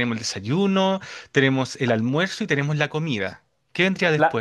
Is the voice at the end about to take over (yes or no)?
yes